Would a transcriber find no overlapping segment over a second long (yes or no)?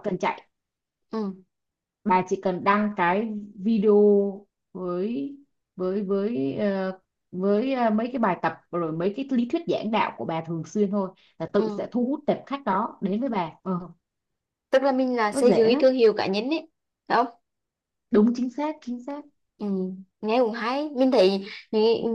yes